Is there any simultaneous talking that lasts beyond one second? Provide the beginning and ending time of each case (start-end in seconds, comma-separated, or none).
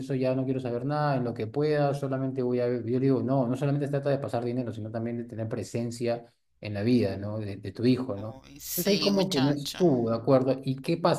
8.2-9.8